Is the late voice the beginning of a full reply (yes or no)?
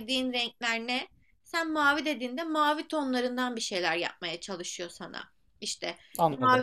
no